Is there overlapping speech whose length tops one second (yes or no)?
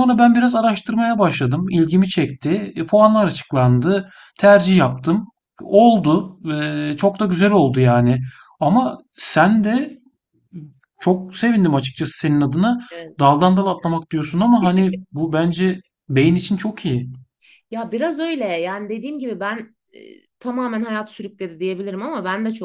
no